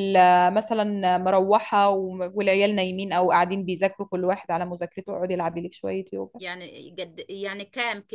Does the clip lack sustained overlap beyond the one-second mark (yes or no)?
yes